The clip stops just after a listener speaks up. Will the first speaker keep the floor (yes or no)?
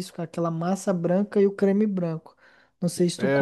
yes